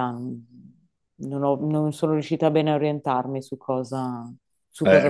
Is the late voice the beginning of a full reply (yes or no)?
yes